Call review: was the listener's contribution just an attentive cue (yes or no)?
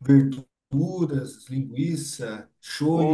no